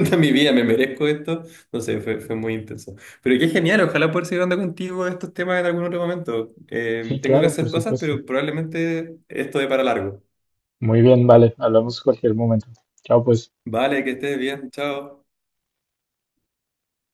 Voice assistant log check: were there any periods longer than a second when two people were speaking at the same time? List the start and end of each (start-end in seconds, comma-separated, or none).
7.0-8.2